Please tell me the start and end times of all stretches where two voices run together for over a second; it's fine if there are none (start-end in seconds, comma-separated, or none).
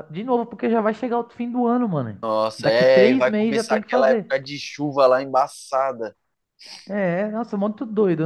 2.6-4.3